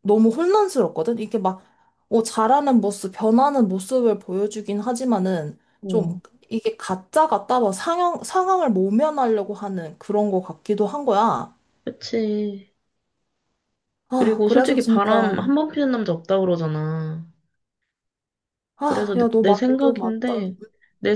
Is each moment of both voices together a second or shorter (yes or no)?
no